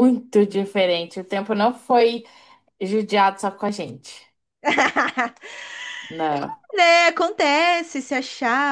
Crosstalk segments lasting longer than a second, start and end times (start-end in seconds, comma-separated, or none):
none